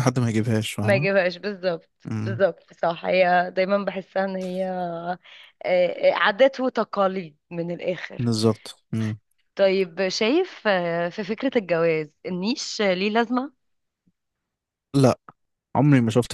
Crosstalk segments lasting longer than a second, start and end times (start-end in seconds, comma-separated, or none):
none